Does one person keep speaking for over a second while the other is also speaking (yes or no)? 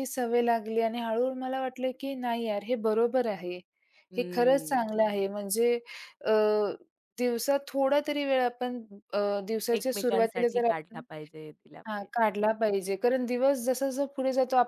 yes